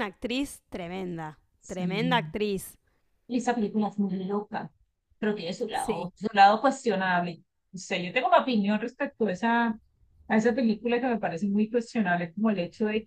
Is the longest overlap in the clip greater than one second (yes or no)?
no